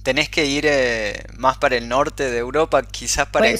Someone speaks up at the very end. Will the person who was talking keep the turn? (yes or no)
no